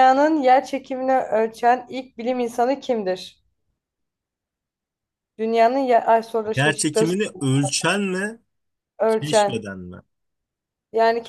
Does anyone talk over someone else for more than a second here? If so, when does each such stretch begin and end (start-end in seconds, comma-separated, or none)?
none